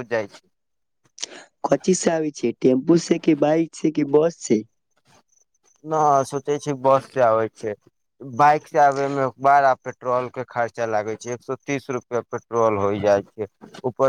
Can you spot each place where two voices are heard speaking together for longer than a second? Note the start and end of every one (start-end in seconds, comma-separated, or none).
none